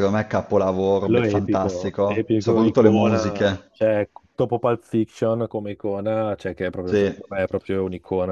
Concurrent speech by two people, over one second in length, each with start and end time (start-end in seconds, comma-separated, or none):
1.0-3.7